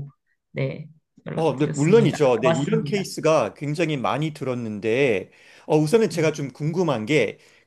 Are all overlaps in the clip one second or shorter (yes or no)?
no